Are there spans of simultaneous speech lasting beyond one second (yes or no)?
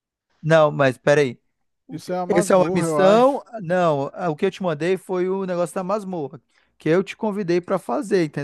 yes